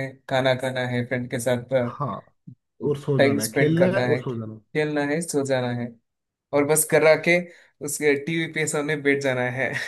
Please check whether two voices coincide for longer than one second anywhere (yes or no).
yes